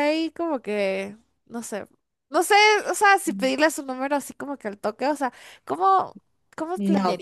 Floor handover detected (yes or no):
yes